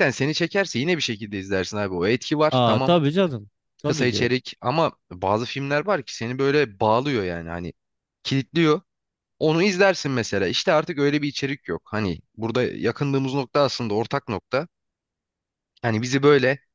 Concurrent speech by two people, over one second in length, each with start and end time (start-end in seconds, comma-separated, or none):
none